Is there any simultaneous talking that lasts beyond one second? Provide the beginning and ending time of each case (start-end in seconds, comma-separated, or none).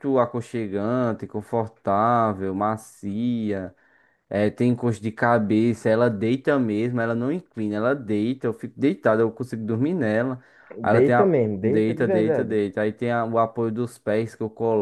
10.9-12.6